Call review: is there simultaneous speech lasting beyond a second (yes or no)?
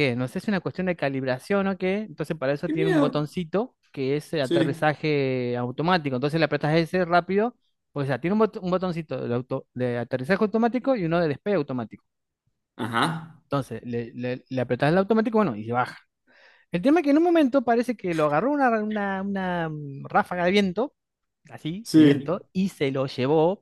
no